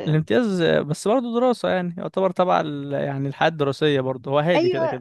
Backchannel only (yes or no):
no